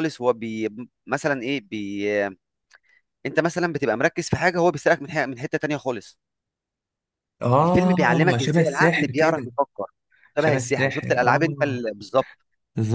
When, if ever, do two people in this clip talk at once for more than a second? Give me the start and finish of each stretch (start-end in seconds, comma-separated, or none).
7.6-9.5, 10.4-11.8